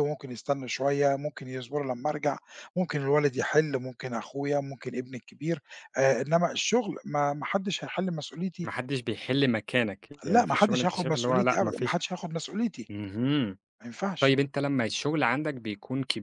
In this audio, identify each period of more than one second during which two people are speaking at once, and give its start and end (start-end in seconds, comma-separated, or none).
10.2-12.0